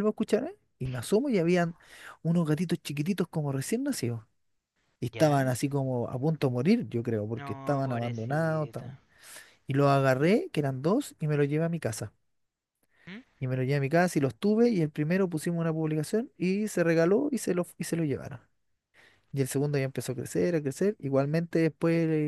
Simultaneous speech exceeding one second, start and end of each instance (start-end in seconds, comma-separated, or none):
7.3-8.9